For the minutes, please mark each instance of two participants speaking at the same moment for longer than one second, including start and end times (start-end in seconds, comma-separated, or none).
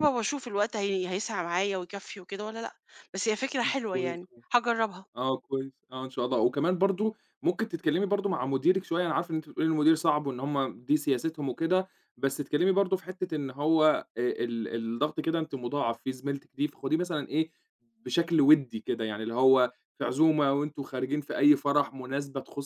none